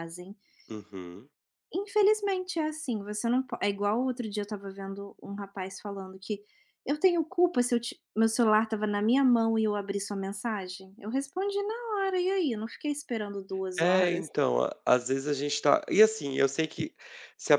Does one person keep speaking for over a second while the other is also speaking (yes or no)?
no